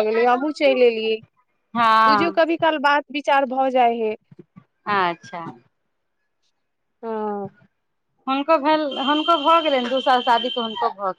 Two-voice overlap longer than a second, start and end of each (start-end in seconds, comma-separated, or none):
none